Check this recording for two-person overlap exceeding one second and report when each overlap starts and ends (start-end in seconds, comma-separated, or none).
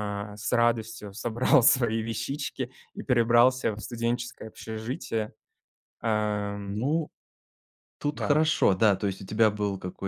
none